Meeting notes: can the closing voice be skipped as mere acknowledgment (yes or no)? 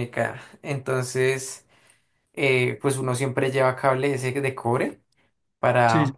yes